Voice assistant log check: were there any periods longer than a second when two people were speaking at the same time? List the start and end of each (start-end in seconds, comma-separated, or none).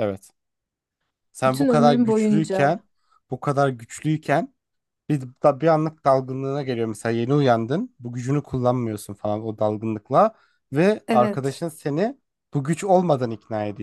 1.5-2.8